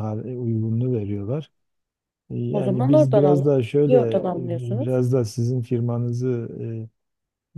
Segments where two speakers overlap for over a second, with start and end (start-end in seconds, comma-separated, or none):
2.5-4.9